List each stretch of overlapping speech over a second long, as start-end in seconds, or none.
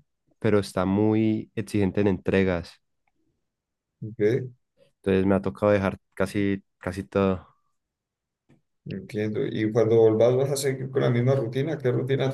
none